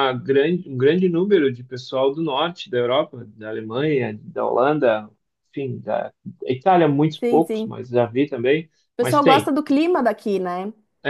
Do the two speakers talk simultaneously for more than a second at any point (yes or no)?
no